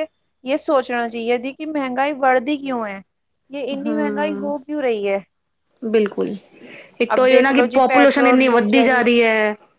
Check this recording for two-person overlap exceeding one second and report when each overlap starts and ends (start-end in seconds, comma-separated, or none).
7.1-9.0